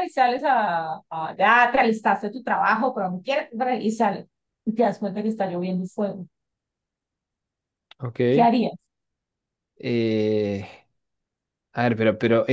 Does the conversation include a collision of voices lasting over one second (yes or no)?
no